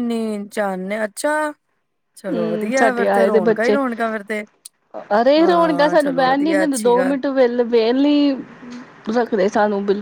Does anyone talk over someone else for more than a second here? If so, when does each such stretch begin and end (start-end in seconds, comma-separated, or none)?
2.3-3.8, 5.4-7.2